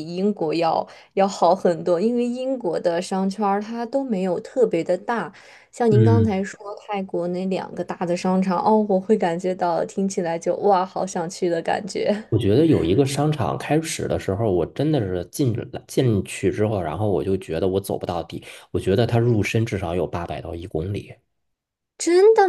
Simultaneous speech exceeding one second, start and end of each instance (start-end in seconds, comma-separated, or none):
none